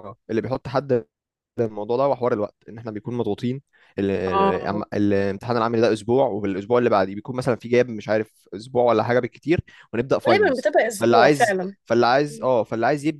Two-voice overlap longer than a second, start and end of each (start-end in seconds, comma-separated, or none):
10.3-11.8